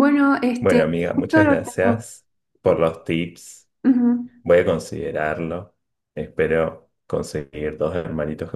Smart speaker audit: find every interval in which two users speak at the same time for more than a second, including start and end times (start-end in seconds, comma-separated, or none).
0.6-2.0